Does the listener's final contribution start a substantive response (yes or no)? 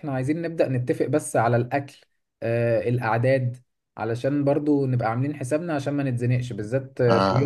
no